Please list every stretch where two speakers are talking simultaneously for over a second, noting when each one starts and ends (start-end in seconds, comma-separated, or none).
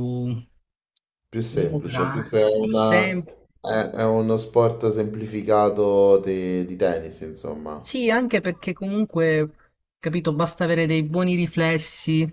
1.5-3.2